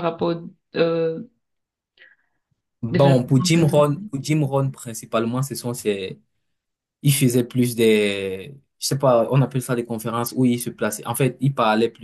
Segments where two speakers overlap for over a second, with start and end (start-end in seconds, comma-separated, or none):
2.9-4.1